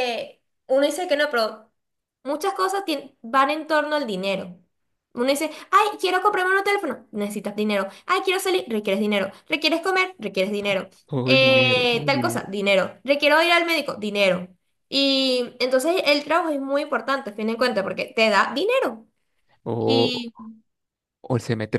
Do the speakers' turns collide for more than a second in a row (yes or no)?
yes